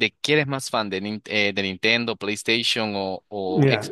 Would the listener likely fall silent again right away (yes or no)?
no